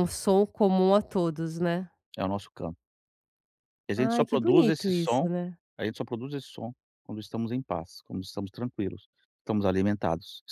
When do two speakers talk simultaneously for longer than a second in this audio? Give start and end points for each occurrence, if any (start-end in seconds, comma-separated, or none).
4.0-5.3